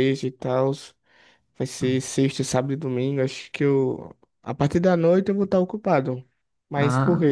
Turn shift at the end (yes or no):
yes